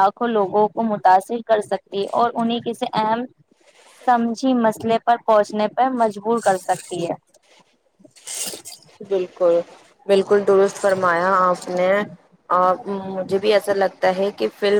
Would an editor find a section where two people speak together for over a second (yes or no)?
no